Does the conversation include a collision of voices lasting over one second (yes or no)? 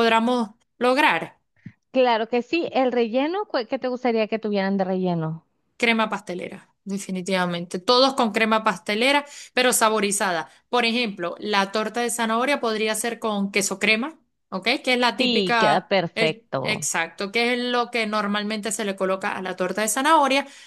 yes